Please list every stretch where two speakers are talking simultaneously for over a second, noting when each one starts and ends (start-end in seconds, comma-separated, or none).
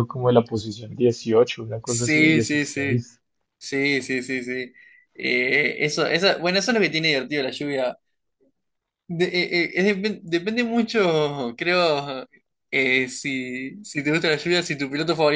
1.8-3.1